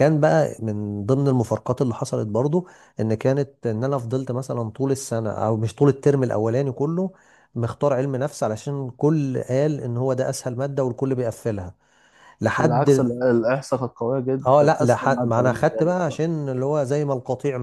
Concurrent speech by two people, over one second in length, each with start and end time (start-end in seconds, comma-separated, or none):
14.5-16.2